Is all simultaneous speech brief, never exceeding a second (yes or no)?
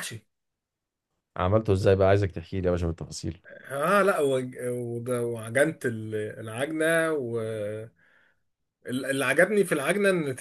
yes